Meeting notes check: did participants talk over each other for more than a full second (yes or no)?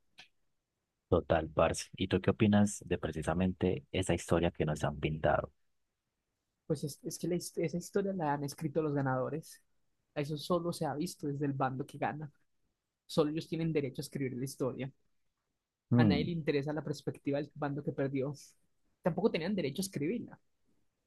no